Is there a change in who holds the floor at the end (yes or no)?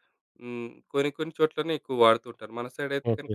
no